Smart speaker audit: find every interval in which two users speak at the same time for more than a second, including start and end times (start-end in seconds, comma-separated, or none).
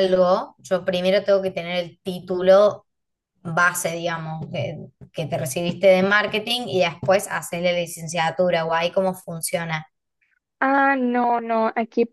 none